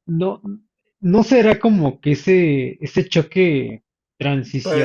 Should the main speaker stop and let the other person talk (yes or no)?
no